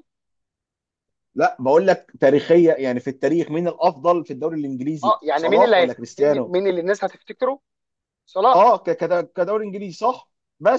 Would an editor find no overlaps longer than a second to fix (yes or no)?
no